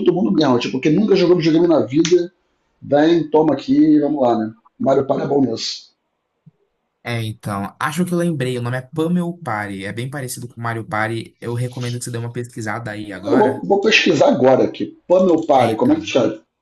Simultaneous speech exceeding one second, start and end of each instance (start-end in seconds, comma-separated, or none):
none